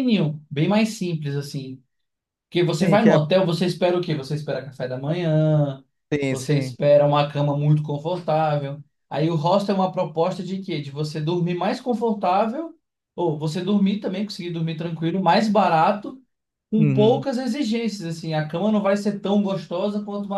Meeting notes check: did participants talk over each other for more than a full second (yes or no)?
no